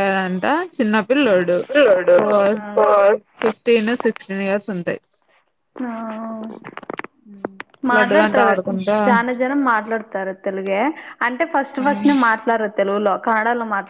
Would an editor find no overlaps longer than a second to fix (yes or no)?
yes